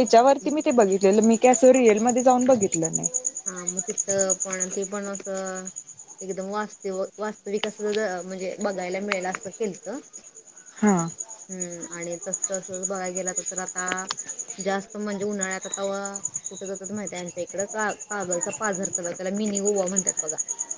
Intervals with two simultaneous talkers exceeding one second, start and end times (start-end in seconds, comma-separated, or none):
none